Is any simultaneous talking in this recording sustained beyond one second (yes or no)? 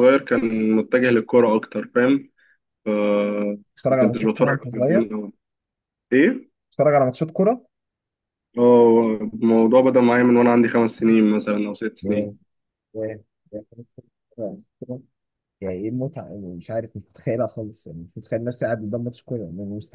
yes